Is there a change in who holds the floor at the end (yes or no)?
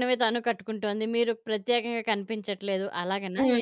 yes